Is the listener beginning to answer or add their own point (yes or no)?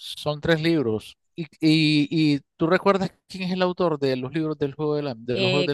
yes